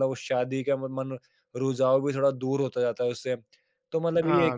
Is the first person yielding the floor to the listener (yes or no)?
no